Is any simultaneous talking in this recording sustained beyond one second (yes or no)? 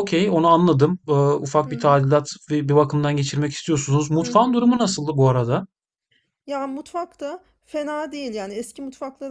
no